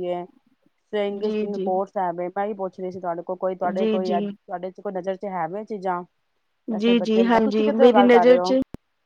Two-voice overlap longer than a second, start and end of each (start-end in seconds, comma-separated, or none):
6.8-8.5